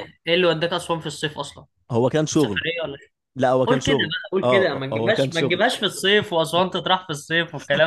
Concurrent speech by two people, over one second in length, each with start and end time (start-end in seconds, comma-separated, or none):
3.7-5.6